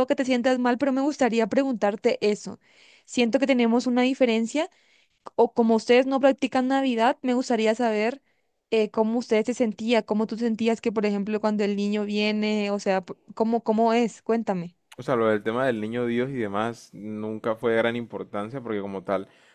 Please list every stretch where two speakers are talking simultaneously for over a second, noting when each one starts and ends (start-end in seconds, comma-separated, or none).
none